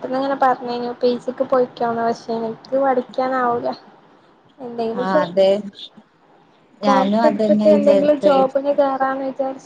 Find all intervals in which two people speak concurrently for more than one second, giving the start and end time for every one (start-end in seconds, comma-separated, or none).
6.9-8.3